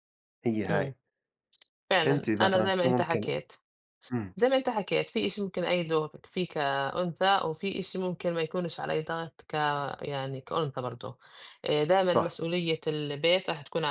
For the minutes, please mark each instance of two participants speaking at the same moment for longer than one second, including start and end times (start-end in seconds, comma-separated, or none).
2.0-3.3